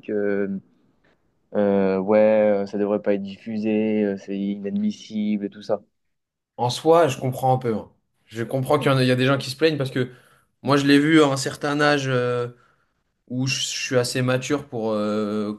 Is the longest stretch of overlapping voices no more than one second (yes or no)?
yes